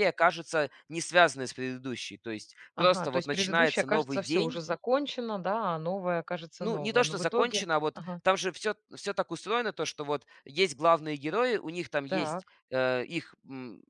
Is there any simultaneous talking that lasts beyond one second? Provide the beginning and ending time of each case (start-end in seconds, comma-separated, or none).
2.8-4.6, 6.6-8.2